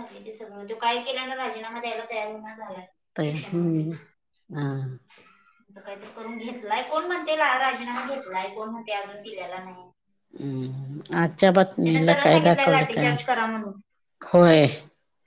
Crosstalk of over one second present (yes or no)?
yes